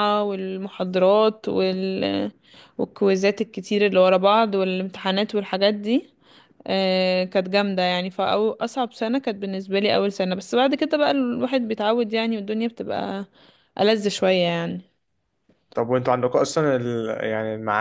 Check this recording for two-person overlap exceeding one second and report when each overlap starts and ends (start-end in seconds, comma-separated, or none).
none